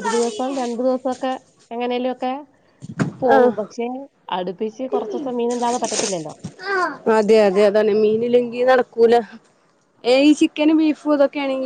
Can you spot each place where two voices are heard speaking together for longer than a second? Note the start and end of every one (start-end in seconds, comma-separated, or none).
none